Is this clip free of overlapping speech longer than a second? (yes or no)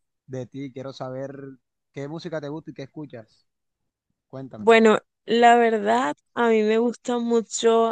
yes